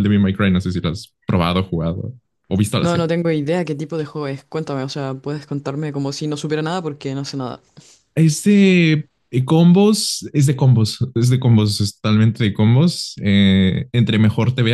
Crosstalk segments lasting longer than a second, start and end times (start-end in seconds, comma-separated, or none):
none